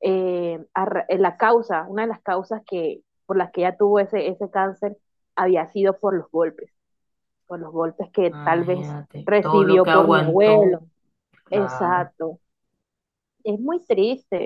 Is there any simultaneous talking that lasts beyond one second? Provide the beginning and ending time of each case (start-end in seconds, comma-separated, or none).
8.3-10.8